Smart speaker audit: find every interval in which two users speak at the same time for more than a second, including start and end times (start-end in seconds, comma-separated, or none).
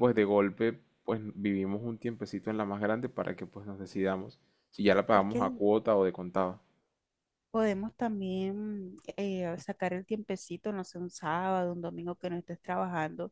none